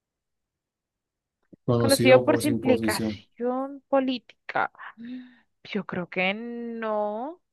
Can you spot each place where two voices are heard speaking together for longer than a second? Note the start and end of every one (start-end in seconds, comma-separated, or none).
1.8-3.2